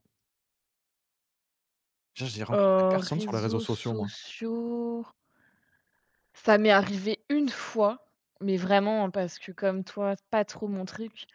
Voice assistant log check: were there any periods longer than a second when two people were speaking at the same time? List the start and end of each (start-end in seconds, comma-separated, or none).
2.5-4.2